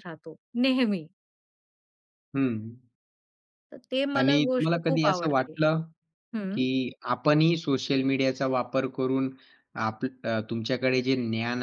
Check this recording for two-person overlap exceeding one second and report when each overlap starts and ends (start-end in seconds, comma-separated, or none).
4.2-5.5